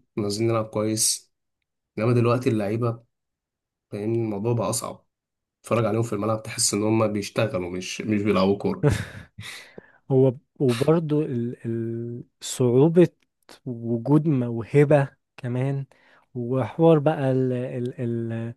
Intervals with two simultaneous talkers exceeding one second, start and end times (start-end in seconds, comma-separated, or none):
none